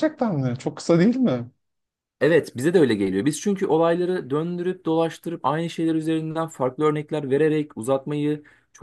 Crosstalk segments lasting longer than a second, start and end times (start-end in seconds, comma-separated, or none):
none